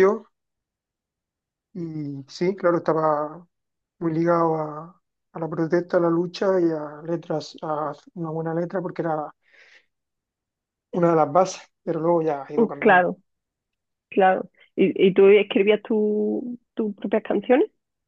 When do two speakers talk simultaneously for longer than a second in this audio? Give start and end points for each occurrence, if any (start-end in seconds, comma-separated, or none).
none